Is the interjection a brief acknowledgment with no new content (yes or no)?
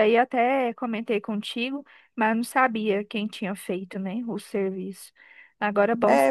no